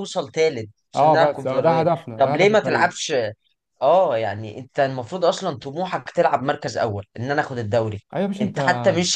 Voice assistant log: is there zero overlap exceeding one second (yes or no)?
no